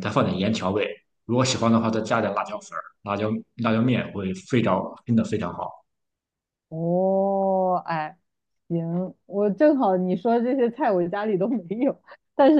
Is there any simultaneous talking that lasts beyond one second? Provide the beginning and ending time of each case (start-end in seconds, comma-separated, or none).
none